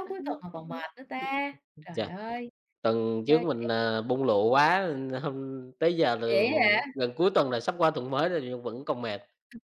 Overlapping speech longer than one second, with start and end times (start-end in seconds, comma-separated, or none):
none